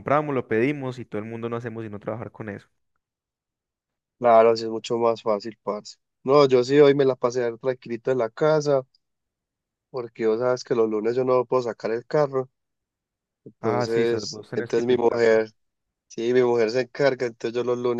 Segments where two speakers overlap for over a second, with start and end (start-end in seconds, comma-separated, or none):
13.6-15.4